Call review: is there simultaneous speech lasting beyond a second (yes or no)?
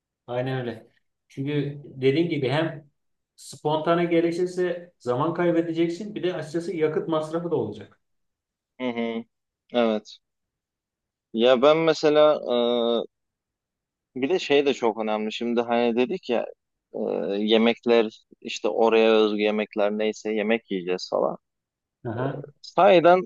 no